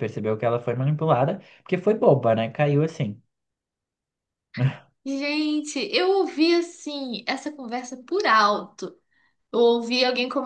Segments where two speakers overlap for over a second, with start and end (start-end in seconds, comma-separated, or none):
none